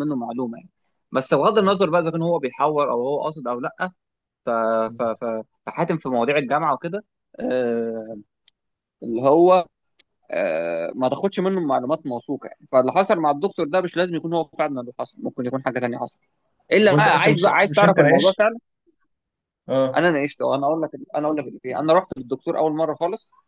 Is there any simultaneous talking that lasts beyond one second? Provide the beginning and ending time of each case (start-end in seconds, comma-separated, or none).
16.8-18.4